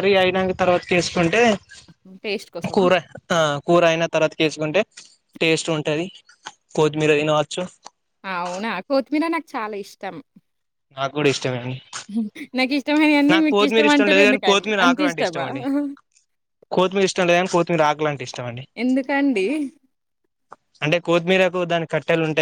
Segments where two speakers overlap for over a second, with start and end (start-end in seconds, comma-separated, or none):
13.5-15.4